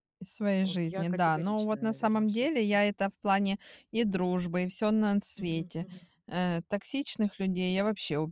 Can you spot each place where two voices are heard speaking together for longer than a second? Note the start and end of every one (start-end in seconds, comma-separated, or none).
0.6-2.8